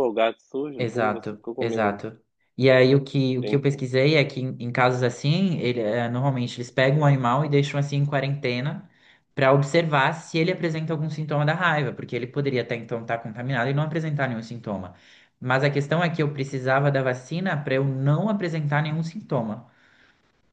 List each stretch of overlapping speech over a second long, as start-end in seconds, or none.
0.8-2.0